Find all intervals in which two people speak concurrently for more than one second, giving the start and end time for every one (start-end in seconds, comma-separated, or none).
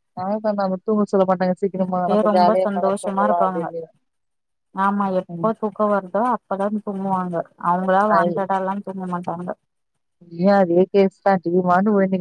none